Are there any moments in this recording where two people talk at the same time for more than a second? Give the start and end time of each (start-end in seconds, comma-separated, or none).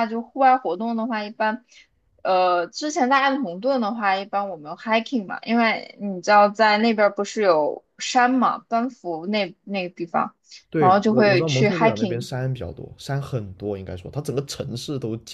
10.8-12.3